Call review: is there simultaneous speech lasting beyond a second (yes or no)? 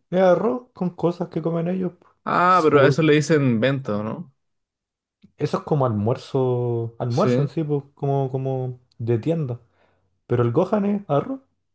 no